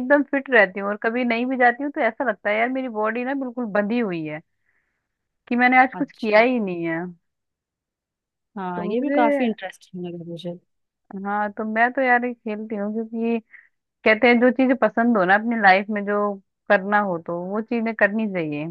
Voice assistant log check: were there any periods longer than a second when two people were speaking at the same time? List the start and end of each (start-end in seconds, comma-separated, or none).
none